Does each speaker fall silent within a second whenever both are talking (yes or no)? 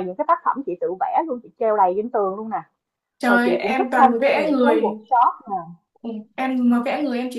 no